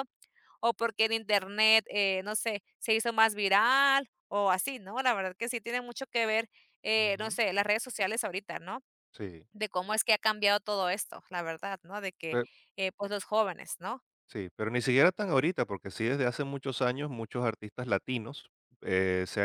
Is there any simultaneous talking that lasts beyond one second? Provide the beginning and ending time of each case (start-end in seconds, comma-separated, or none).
none